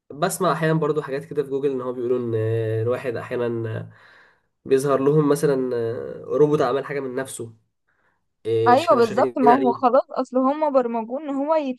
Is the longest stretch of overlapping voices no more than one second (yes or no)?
no